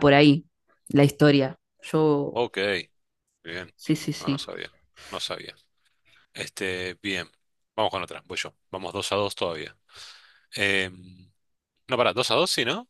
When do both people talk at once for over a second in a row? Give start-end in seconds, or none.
none